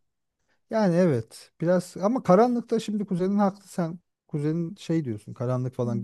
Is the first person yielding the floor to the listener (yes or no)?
yes